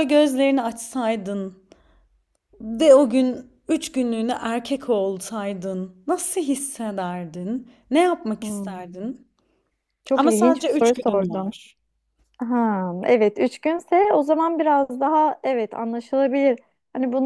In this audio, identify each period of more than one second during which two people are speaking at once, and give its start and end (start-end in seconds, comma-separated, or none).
10.2-11.5